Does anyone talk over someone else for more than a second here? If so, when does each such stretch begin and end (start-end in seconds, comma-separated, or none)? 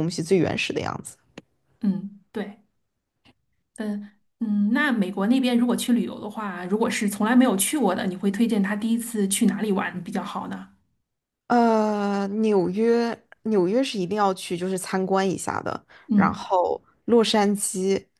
none